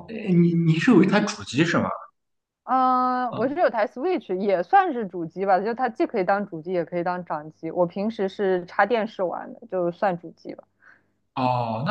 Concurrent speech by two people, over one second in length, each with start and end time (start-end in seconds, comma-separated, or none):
none